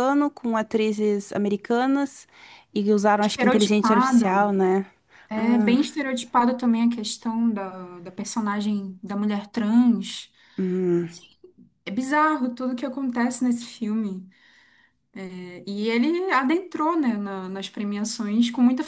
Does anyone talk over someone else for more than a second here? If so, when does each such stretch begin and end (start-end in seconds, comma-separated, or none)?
3.2-4.6